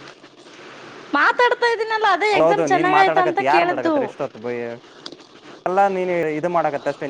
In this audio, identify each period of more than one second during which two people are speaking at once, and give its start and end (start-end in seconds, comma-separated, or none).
2.4-3.9